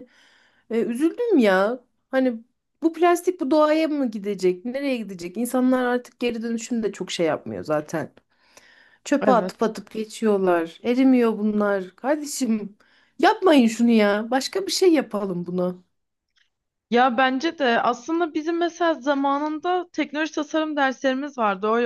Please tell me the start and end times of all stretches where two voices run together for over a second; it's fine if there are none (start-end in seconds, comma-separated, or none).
none